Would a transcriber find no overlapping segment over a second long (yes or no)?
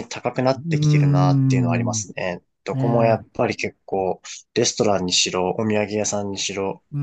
no